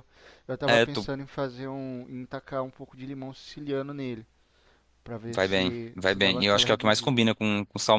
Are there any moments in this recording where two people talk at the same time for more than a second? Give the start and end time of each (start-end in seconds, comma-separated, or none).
5.3-7.2